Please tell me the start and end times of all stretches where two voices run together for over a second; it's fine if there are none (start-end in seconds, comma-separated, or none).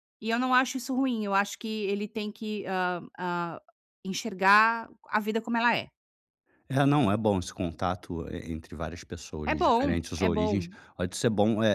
9.4-10.7